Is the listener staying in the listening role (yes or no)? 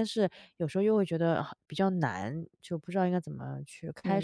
no